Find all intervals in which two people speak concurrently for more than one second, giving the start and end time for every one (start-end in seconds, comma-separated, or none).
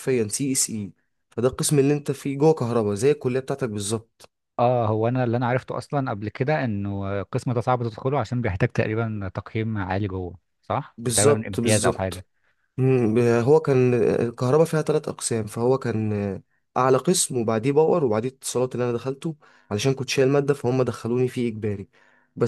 11.0-12.2